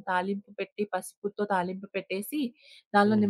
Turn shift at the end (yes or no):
no